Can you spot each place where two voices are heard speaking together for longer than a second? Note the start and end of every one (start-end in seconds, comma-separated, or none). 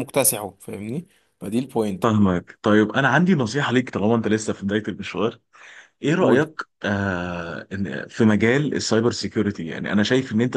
none